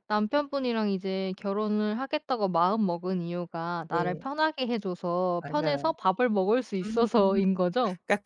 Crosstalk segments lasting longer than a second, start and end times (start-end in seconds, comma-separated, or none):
none